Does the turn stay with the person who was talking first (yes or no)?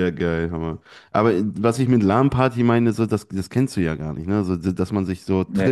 yes